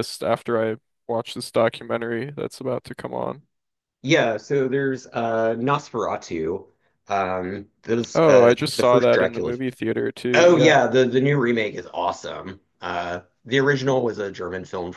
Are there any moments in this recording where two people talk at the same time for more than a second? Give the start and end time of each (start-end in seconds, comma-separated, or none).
8.2-9.6